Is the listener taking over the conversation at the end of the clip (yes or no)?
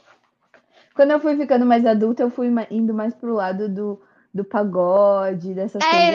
yes